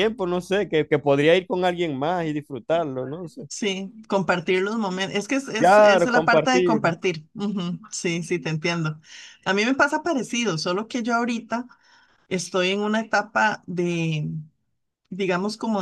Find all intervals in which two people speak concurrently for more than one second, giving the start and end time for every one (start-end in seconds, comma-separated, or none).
5.6-6.8